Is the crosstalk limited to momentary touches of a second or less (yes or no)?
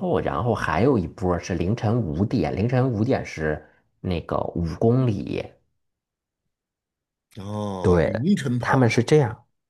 yes